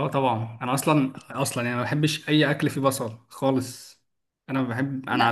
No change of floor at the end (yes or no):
yes